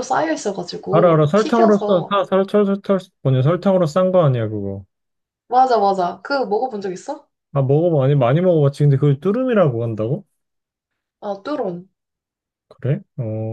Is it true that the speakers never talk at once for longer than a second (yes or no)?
no